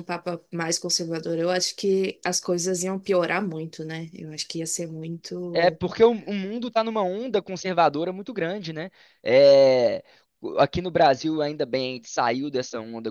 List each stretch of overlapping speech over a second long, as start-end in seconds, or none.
none